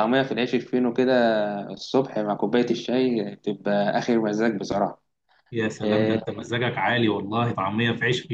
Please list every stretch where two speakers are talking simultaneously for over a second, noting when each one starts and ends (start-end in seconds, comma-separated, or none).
none